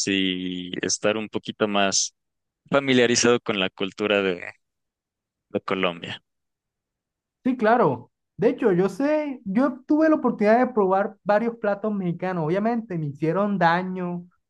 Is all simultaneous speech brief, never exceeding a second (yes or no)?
yes